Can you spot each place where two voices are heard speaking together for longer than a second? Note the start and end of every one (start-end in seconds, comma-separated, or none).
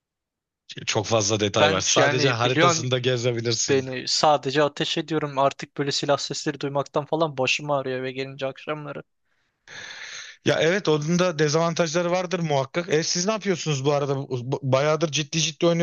1.6-2.9